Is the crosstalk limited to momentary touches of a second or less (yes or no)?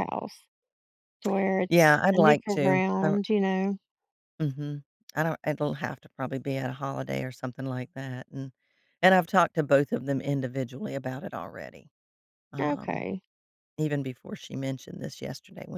no